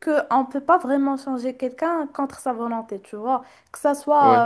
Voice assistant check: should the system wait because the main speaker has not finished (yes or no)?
yes